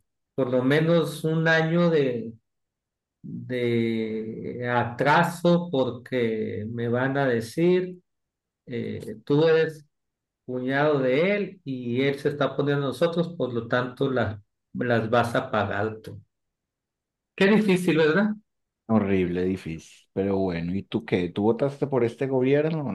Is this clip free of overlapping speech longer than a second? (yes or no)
yes